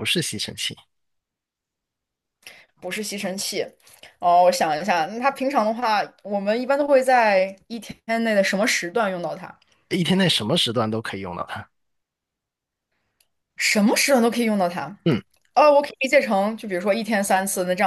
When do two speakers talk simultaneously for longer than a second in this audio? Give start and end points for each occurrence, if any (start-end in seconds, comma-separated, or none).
none